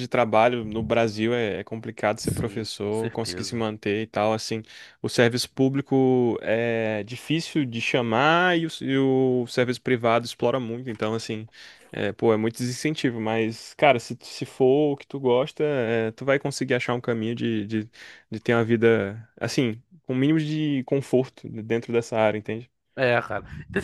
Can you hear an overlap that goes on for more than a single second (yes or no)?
yes